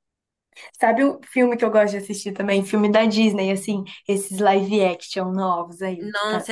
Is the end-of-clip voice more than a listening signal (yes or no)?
yes